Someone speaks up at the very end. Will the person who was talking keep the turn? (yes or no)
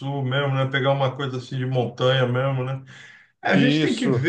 yes